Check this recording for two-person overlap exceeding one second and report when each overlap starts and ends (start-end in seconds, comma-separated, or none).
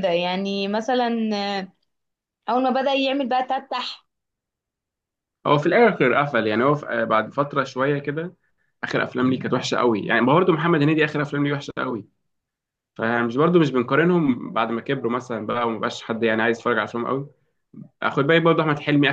none